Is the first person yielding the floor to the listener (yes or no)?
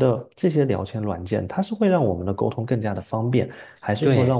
no